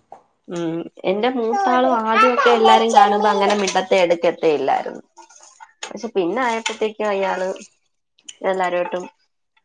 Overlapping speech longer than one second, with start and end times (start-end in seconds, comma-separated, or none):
1.6-3.5